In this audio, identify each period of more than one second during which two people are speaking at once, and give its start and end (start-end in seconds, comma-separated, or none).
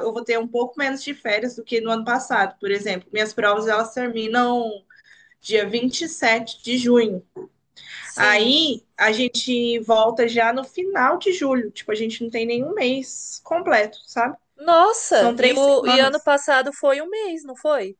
15.1-16.3